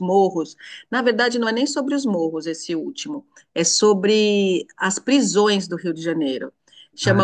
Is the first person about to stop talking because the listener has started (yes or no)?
no